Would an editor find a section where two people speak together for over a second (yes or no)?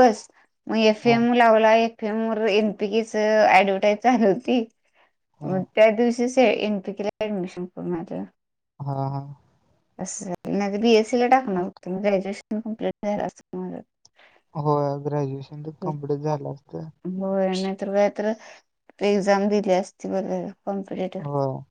no